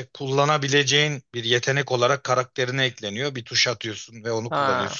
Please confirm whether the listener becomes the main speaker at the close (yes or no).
no